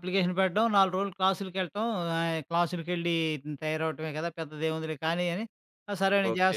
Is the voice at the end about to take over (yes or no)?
yes